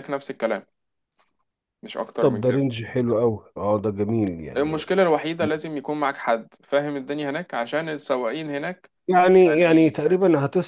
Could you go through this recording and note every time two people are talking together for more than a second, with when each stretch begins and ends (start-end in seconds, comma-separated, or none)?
none